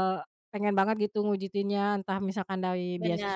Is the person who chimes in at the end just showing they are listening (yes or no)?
yes